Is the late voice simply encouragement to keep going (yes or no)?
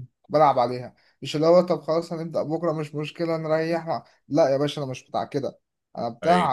yes